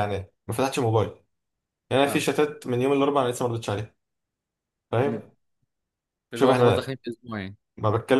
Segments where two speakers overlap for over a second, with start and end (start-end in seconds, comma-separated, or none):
none